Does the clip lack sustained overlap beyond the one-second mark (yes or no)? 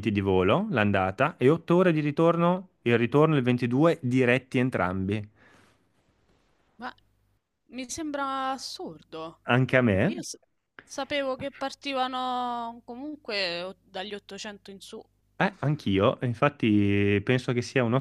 yes